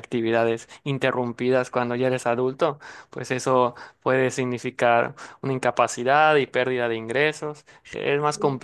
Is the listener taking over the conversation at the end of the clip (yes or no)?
no